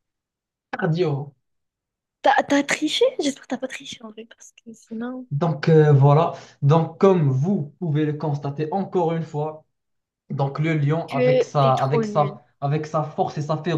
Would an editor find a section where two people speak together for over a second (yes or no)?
yes